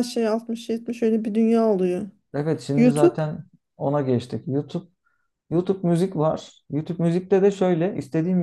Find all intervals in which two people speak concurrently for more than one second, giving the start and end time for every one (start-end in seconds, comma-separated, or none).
none